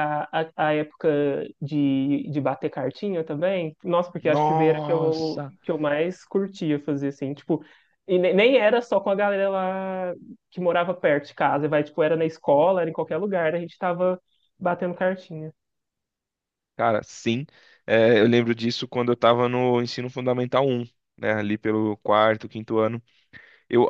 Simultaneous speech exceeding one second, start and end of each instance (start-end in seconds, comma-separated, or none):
4.2-5.5